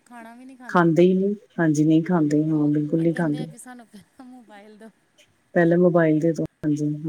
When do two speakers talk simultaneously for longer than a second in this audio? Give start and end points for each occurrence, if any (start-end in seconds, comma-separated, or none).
2.1-3.5